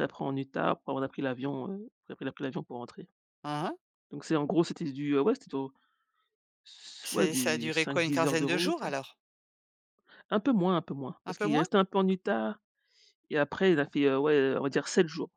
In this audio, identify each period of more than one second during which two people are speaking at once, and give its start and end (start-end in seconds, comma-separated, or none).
7.0-8.8